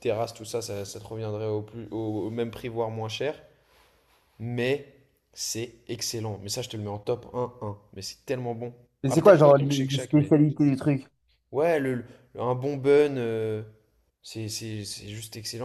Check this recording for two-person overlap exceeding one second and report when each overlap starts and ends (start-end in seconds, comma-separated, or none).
9.0-10.3